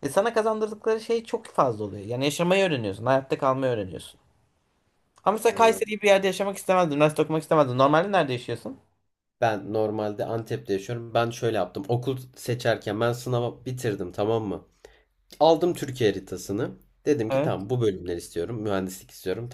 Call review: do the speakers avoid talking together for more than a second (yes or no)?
yes